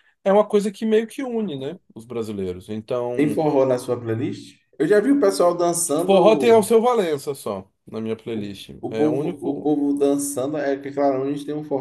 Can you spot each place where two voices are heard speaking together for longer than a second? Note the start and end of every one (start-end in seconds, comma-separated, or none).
8.3-9.7